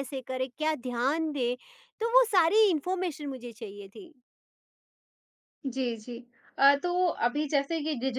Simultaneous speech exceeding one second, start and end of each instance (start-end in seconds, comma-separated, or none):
none